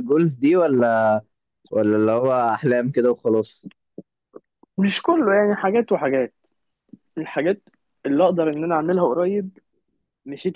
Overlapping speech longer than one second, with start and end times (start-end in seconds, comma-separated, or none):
none